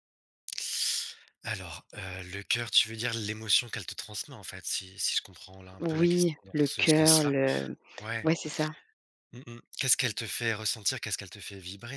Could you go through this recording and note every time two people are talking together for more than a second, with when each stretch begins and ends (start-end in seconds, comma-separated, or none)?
5.8-7.3